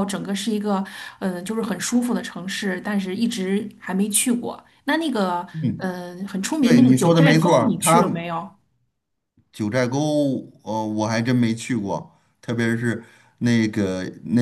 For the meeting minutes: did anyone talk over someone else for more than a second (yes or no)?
yes